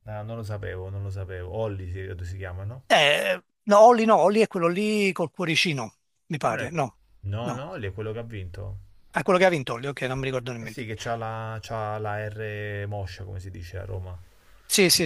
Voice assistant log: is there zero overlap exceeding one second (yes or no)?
yes